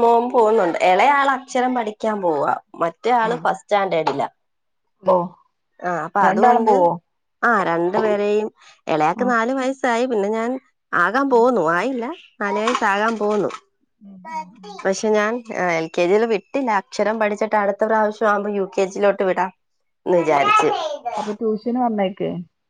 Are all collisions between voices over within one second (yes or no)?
yes